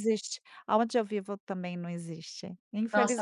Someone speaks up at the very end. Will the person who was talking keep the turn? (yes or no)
no